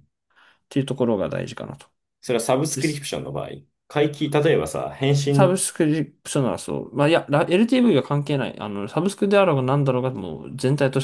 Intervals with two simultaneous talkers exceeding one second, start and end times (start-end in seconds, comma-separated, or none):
none